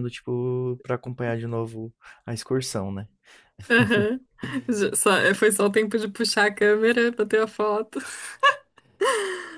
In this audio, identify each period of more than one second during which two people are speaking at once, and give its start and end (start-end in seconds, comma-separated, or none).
none